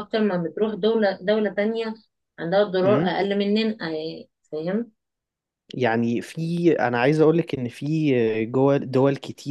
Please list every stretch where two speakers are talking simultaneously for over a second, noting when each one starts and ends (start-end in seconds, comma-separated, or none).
none